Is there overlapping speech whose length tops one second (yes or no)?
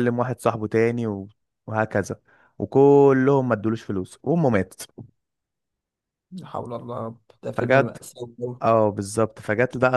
no